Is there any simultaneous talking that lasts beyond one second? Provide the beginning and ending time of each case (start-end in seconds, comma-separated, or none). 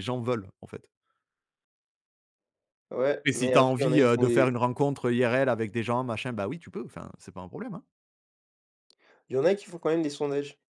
3.2-4.5